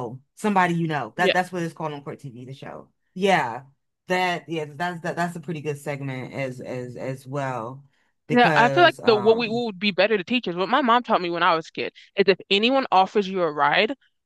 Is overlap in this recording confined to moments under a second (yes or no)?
no